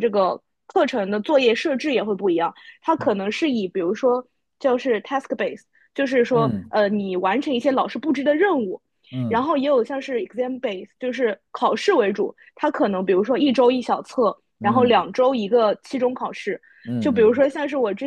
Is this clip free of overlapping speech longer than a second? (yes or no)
yes